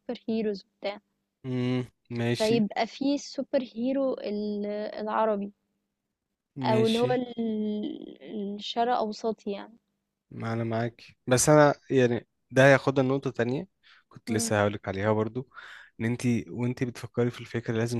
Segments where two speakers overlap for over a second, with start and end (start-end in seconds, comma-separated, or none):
none